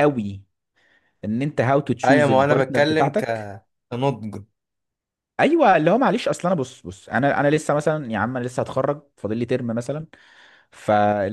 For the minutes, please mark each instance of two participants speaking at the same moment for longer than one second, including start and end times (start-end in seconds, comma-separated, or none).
2.0-3.2